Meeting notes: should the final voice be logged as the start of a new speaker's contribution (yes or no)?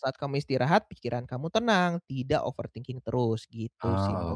yes